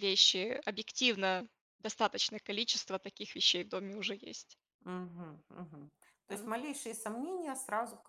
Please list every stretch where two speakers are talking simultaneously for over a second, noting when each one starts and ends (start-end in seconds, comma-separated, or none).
none